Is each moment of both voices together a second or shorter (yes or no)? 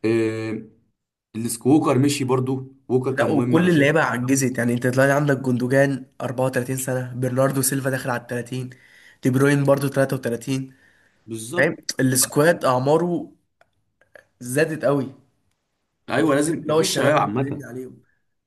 no